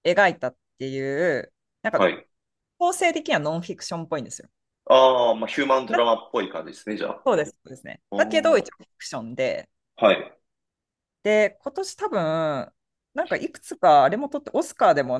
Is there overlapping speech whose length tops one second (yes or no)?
no